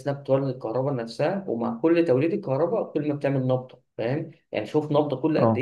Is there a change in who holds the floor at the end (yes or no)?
no